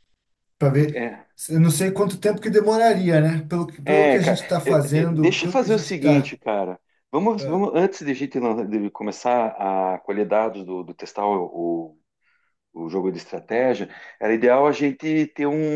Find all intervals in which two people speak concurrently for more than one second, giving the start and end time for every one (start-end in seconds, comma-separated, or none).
3.8-6.3